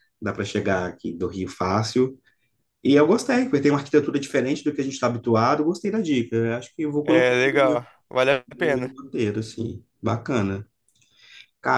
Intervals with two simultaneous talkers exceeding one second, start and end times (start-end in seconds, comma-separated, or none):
none